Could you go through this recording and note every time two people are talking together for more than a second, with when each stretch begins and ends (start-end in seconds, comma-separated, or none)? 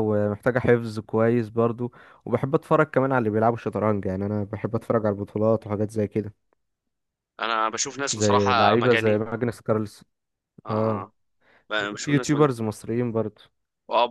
8.1-9.4